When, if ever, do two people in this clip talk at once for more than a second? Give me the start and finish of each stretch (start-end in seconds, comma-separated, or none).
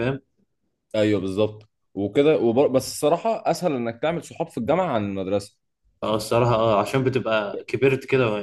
none